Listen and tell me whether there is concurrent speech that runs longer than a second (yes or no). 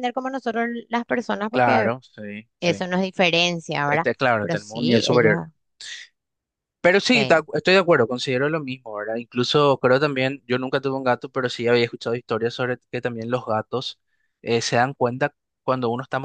yes